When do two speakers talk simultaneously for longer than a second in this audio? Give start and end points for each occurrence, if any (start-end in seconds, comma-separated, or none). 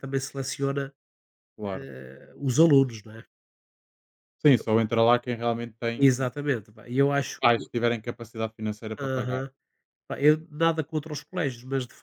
none